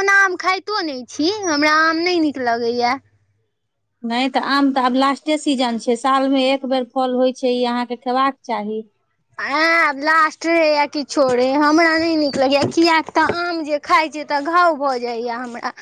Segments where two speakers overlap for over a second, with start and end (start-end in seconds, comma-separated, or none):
none